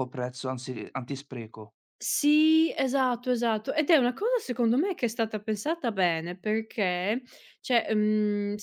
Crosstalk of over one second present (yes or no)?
no